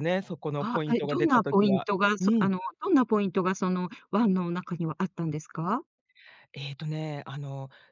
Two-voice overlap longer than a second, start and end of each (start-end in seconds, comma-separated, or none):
0.6-2.5